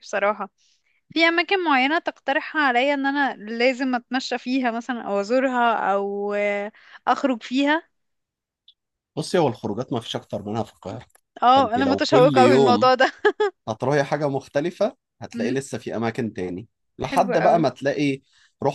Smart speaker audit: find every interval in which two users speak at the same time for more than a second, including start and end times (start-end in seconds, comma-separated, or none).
11.5-12.9